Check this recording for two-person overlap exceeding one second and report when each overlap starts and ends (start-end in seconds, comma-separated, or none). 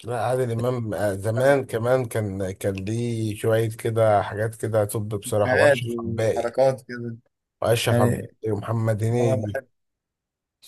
5.2-6.5